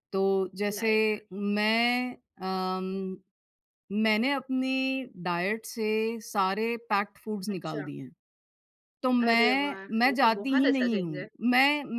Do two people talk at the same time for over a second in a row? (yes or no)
yes